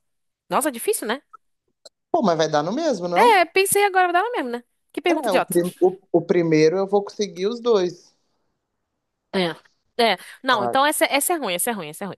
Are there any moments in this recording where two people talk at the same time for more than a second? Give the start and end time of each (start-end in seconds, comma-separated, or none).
none